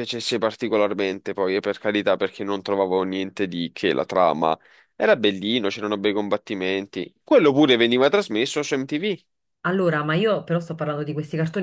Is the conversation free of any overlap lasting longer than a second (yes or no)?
yes